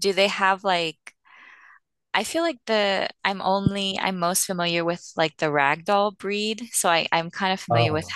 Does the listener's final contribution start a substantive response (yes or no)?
no